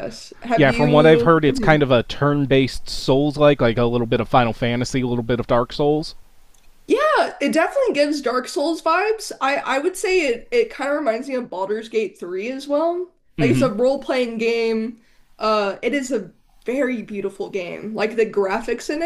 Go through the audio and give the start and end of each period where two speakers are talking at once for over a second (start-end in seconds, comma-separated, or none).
0.6-1.8